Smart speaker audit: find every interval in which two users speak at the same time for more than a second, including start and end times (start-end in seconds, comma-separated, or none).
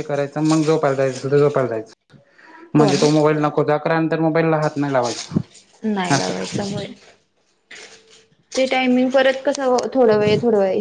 none